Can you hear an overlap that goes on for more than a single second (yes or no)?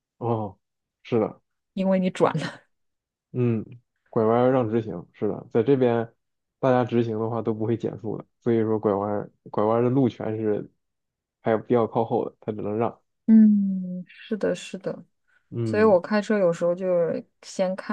no